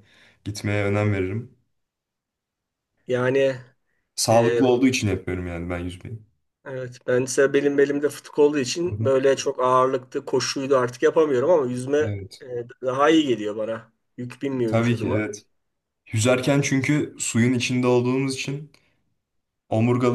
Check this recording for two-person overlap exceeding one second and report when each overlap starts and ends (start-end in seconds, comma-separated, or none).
none